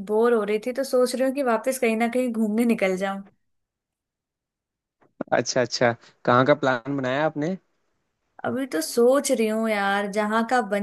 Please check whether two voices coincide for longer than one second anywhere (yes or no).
no